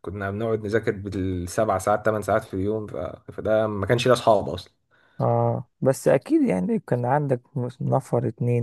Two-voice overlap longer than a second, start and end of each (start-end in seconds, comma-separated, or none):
none